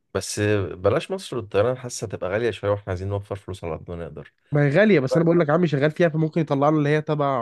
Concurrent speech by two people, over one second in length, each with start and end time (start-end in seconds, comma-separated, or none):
none